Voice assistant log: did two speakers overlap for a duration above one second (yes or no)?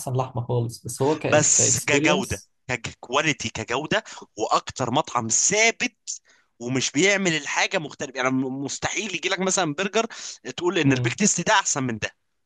yes